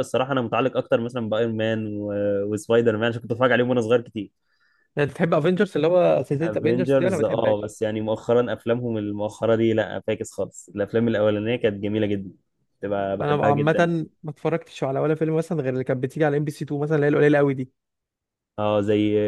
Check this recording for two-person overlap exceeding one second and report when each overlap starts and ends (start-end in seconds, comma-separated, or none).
6.4-7.7